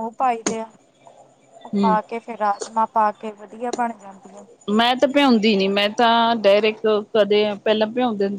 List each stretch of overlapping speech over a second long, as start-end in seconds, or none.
none